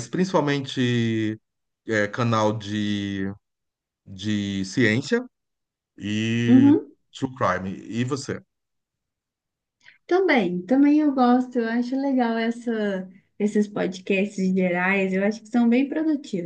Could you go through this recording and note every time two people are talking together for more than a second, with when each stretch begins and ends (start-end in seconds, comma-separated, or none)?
none